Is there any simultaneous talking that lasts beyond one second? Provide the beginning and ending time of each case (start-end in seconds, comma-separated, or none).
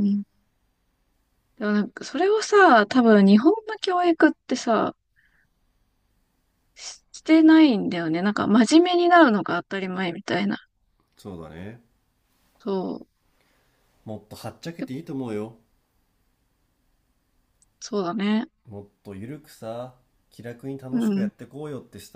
none